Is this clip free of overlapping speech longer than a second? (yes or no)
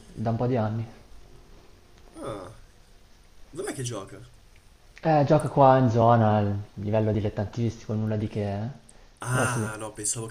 yes